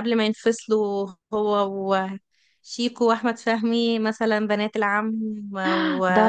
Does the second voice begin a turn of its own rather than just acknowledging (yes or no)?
yes